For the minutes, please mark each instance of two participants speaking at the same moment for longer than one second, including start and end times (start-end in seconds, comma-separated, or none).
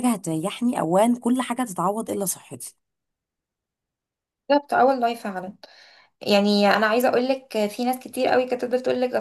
none